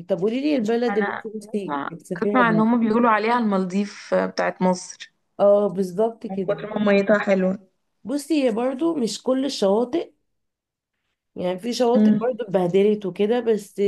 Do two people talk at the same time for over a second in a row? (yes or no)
yes